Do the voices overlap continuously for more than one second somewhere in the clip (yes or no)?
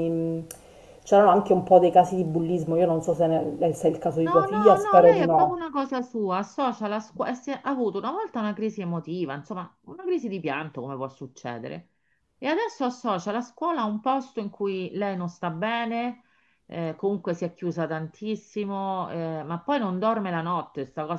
yes